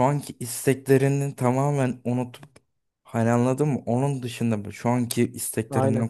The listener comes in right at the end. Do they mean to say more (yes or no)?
no